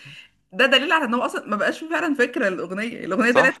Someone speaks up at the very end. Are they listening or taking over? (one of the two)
taking over